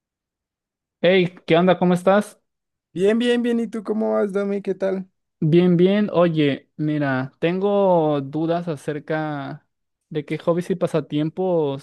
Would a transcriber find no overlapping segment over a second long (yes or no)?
yes